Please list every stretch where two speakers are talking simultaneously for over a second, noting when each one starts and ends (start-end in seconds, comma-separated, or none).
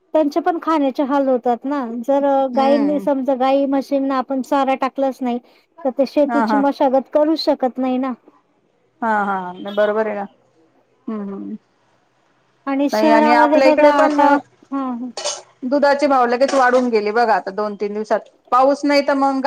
12.9-14.2